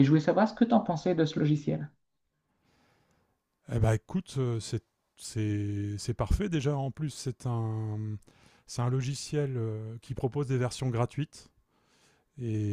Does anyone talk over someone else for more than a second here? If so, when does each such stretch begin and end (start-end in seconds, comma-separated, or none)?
none